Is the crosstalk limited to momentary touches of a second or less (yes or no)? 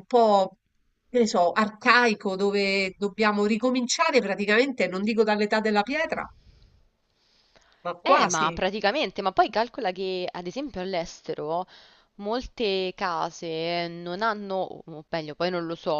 yes